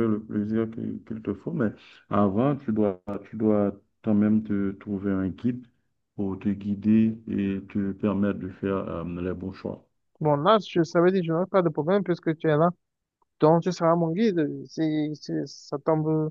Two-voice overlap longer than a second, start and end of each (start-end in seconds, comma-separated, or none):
none